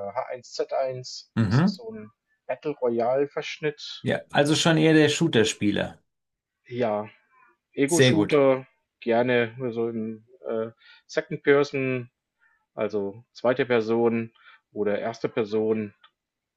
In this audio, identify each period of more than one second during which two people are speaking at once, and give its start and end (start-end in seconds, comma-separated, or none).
none